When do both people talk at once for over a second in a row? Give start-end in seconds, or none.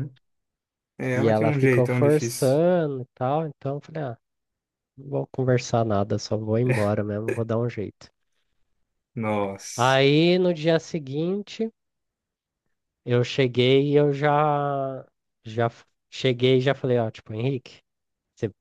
1.1-2.6